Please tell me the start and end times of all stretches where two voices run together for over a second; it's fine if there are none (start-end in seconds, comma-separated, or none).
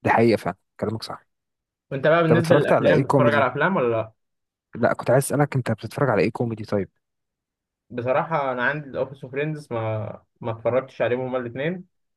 2.3-3.5